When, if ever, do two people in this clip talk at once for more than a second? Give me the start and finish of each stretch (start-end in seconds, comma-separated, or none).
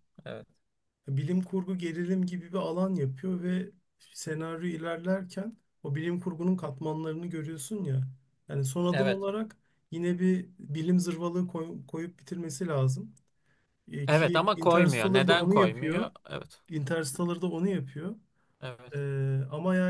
14.1-16.1